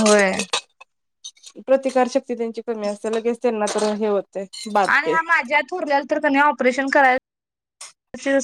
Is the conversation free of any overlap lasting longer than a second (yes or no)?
yes